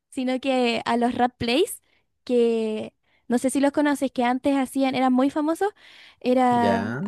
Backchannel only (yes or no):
yes